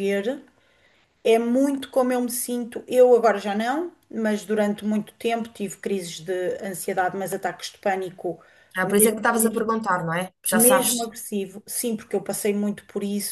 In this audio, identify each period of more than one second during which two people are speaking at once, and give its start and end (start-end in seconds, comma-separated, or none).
none